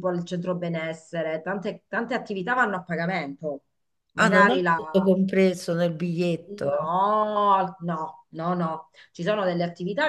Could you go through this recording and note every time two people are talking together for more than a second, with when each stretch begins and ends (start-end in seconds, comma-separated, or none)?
none